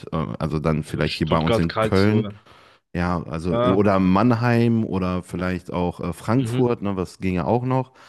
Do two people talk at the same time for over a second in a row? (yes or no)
yes